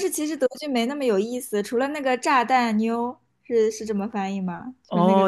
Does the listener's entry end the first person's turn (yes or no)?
yes